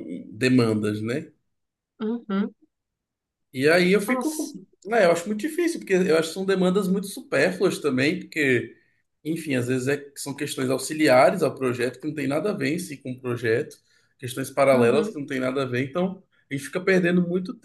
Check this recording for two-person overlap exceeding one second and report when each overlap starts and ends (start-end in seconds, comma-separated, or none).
none